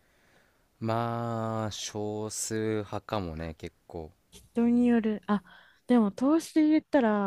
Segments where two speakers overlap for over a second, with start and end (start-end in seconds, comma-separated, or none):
none